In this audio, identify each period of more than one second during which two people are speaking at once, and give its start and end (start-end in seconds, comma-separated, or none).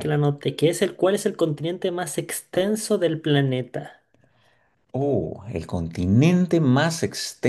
none